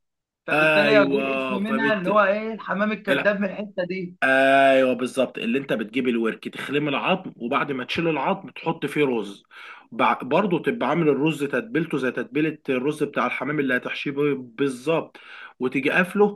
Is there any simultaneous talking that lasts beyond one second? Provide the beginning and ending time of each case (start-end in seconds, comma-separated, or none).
0.5-2.1